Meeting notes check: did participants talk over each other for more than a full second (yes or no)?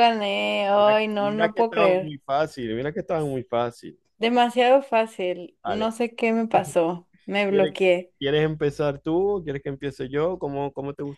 yes